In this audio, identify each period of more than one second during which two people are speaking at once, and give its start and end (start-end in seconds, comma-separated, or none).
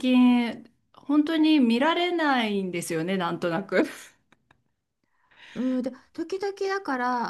none